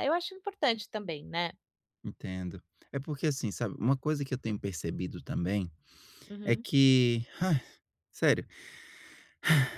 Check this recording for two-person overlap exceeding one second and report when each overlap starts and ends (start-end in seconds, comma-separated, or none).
none